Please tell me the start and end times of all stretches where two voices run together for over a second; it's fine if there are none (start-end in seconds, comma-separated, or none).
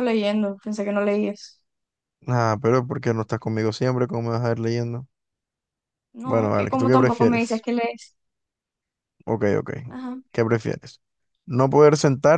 6.2-7.7